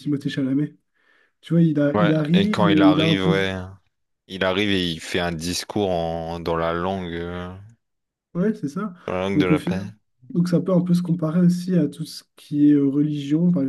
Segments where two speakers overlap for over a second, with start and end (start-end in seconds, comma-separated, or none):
1.9-3.4